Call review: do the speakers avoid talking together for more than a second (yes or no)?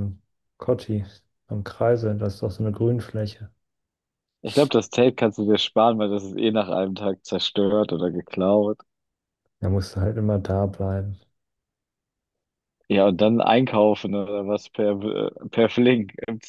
yes